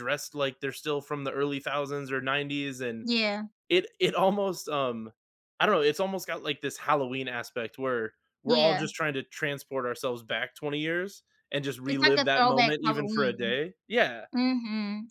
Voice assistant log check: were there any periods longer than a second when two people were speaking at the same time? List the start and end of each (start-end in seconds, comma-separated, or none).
11.9-13.6